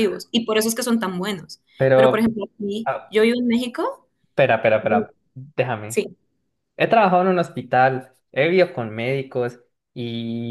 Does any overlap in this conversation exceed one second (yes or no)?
no